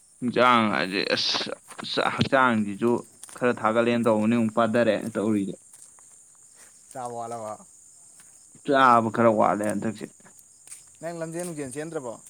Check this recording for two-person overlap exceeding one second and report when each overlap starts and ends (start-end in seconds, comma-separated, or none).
none